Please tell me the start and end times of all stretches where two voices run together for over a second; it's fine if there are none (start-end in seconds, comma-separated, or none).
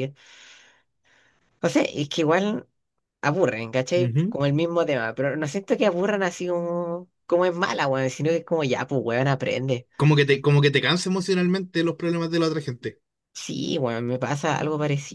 none